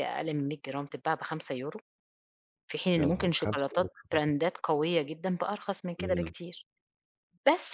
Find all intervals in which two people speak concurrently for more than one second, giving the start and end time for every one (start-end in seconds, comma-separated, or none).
3.0-4.2